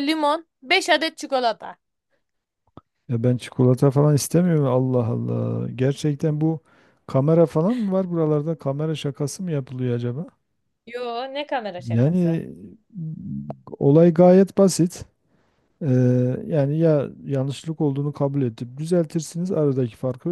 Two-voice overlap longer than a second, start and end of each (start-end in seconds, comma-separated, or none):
none